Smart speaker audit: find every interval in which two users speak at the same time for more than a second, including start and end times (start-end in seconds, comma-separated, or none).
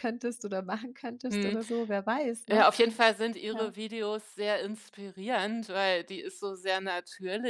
none